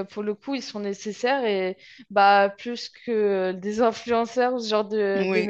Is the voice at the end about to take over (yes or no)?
yes